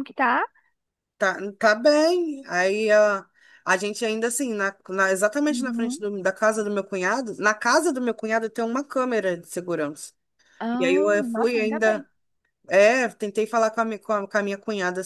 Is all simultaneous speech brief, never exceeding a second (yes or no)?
no